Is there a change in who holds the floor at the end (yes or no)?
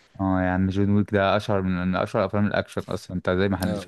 yes